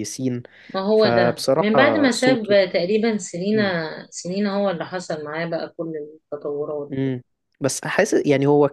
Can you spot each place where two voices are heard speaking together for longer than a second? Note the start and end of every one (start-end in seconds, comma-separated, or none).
0.9-2.7